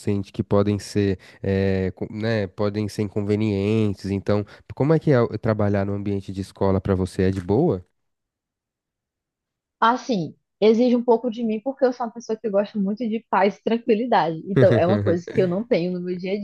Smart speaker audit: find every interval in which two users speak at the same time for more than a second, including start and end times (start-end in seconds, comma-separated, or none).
none